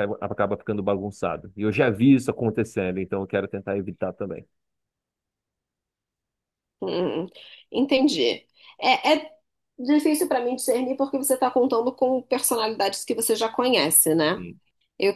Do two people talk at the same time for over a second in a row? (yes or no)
no